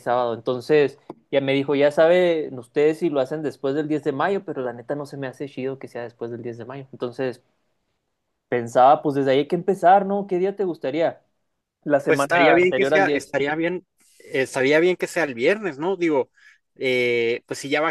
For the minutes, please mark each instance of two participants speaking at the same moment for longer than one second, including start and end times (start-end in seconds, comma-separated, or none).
12.0-13.3